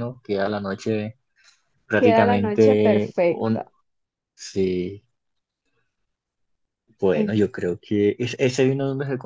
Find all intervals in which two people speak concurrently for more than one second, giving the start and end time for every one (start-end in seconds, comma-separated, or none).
1.9-3.7